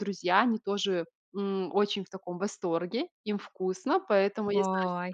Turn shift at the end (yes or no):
no